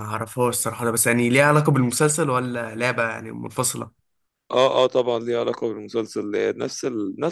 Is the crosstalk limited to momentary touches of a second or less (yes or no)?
yes